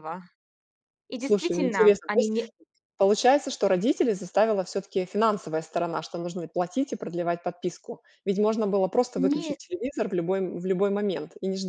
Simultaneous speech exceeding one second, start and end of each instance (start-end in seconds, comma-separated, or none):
1.2-2.5